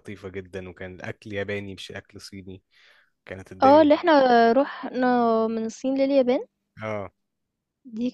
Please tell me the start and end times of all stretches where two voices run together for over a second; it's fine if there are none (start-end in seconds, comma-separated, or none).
none